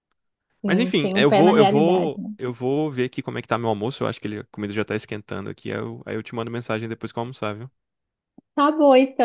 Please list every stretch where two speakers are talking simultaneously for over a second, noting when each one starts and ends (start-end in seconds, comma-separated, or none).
0.7-2.3